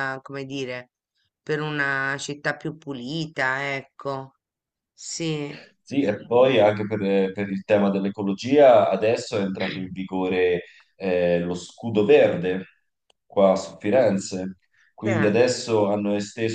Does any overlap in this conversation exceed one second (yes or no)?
no